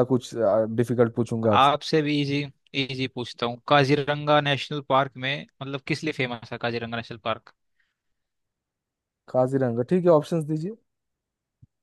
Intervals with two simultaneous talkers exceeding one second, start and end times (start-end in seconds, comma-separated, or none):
none